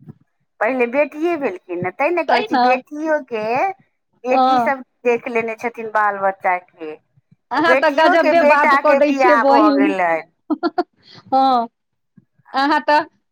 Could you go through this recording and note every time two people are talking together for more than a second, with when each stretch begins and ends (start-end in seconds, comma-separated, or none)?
7.6-9.9